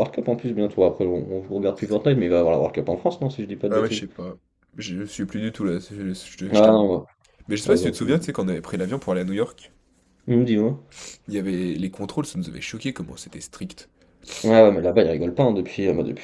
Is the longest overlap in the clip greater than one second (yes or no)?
no